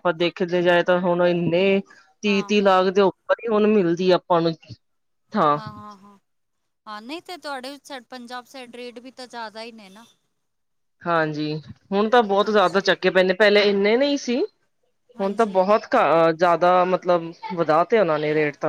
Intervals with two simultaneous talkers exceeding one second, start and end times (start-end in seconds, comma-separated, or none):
none